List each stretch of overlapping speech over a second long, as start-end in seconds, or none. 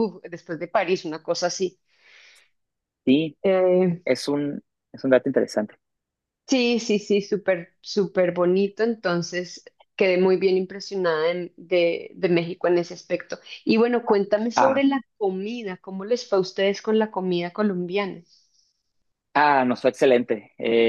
none